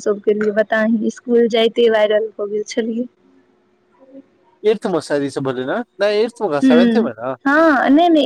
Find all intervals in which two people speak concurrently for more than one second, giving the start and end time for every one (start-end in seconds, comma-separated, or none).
none